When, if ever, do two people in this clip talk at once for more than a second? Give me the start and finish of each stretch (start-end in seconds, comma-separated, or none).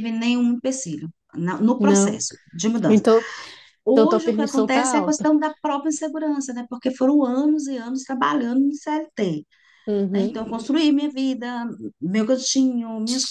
3.9-5.3